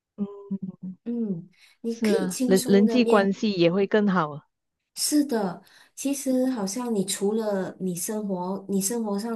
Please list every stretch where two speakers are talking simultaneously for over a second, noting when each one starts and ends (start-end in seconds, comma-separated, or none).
1.9-3.3